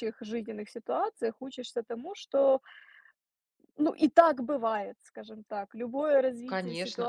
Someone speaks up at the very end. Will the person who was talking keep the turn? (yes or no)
no